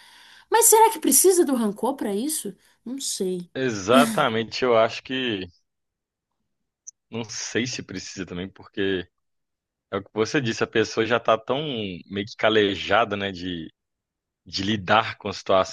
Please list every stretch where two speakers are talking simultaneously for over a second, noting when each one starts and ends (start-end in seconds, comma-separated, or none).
none